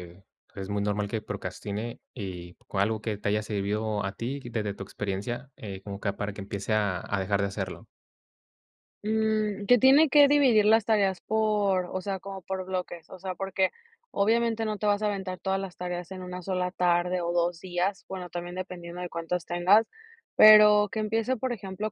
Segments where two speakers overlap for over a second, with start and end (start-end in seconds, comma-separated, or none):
none